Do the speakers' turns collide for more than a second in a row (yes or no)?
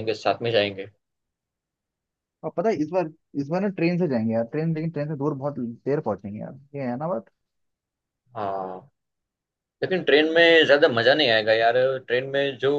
no